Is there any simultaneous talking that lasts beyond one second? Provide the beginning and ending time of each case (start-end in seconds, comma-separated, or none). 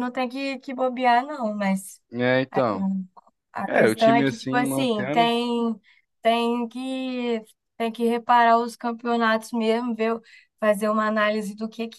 3.6-5.3